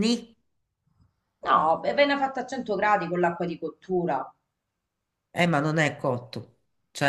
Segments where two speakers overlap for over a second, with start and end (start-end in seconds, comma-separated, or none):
none